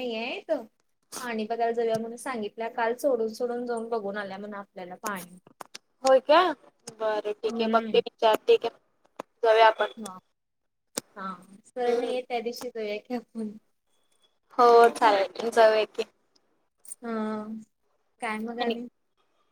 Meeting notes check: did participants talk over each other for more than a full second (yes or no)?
no